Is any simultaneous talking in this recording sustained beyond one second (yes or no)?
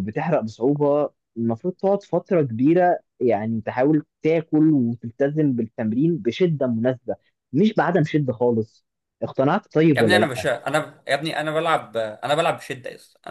no